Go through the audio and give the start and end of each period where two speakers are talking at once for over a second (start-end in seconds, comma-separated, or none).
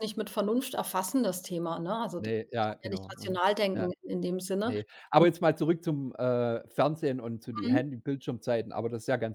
2.2-3.9